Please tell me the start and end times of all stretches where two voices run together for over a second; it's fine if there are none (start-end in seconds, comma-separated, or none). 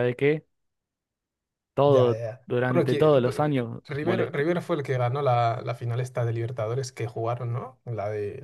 1.8-4.4